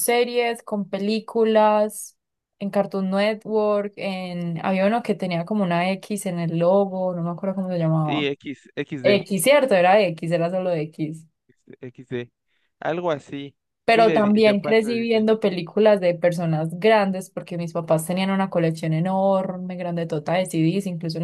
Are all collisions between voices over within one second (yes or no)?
no